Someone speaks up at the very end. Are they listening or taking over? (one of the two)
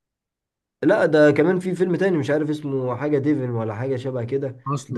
listening